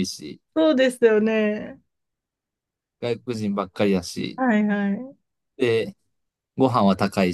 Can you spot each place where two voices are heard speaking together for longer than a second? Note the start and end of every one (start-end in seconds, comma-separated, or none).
none